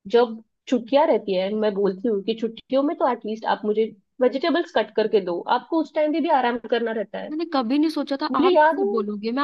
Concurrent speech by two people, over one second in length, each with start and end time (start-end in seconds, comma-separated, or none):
none